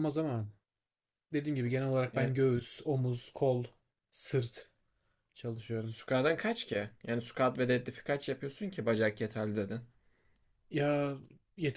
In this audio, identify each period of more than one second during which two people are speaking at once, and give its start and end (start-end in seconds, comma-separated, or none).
none